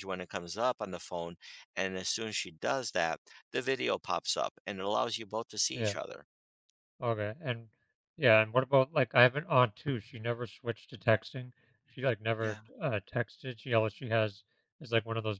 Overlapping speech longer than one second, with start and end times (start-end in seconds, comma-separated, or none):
none